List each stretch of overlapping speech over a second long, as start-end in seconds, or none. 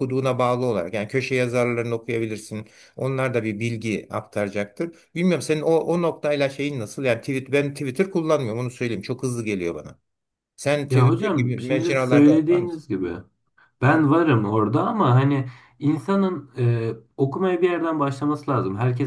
10.9-12.8